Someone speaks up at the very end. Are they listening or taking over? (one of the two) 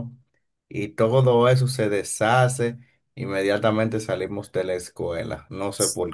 taking over